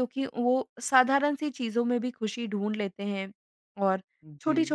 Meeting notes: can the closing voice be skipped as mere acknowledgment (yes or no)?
yes